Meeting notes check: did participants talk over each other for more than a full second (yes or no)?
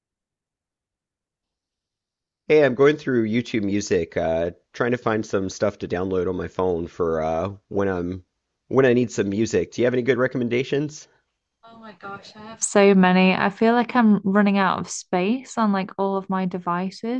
no